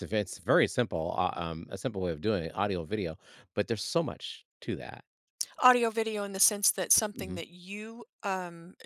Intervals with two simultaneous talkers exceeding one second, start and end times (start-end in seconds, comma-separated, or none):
none